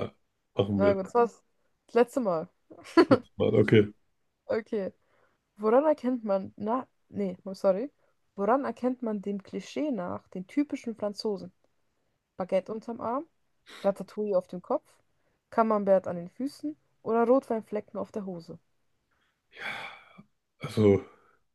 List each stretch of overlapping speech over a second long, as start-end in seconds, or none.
none